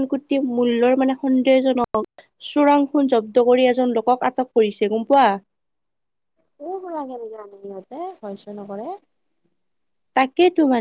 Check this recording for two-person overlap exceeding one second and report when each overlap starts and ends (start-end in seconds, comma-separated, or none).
none